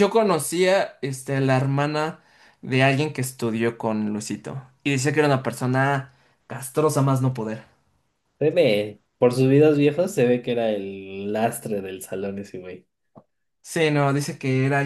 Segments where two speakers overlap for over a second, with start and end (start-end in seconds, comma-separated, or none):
none